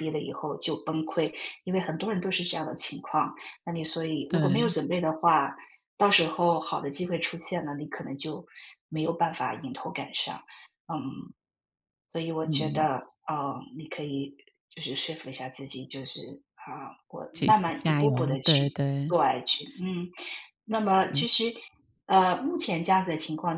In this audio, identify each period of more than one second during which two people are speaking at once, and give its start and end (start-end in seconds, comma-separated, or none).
17.3-19.1